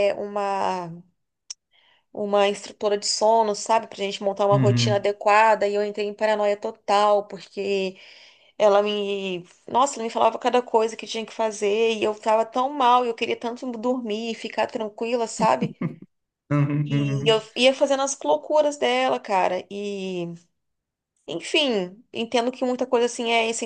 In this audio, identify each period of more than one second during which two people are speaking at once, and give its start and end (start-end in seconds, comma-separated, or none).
none